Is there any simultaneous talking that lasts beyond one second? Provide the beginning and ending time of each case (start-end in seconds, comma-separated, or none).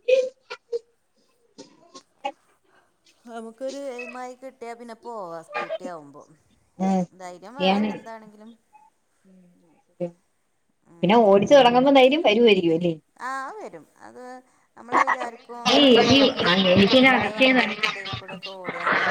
15.7-17.8